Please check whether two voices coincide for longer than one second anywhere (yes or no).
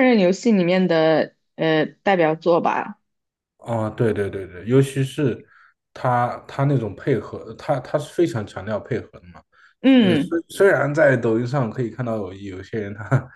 no